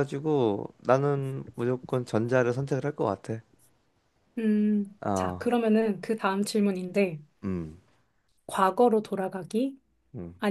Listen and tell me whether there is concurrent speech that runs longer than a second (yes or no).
no